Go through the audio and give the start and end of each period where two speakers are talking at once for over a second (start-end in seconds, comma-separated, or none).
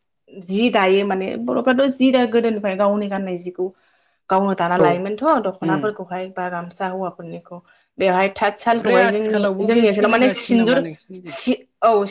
8.8-10.8